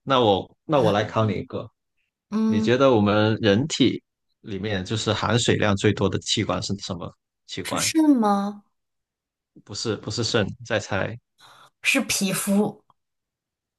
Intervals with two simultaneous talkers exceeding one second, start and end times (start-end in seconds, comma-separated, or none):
none